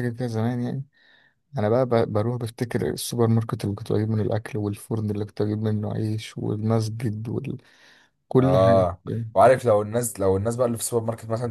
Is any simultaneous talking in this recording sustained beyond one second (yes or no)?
no